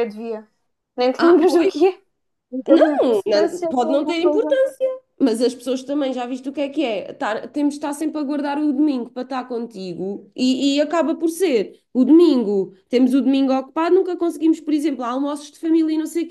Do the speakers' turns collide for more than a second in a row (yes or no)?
yes